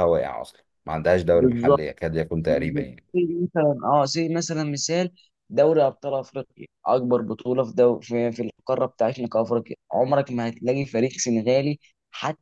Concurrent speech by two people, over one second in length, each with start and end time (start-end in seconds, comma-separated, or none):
none